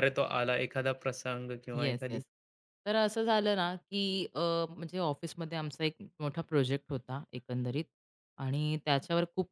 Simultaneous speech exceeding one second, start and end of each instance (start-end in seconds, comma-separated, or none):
none